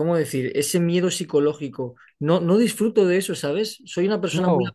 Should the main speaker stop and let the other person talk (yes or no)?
no